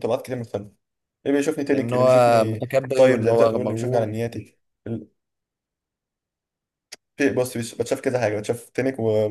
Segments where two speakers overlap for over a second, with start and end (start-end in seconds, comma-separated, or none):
1.7-4.1